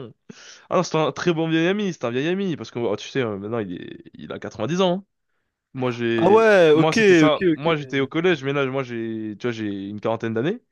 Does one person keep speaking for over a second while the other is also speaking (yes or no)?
yes